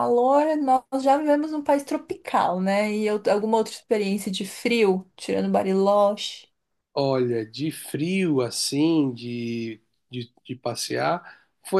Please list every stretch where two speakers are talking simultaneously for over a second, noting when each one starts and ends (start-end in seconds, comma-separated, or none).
none